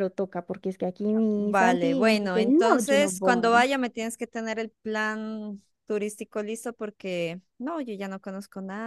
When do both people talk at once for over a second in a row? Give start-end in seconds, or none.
1.4-3.7